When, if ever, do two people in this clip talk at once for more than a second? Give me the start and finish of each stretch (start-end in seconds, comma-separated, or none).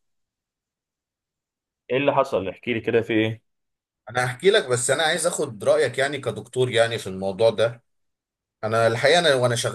none